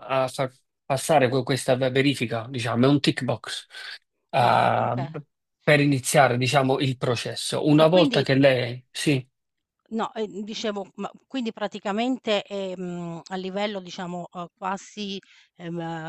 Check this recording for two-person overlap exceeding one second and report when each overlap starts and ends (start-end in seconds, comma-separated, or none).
none